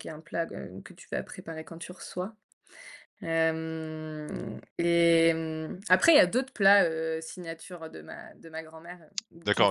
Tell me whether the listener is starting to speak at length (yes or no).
yes